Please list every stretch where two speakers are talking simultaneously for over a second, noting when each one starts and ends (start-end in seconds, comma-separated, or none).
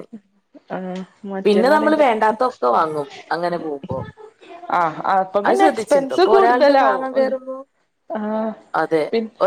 5.5-7.3